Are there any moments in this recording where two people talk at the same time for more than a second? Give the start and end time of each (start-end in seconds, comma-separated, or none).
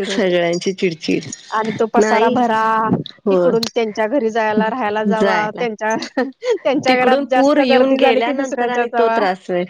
6.9-9.2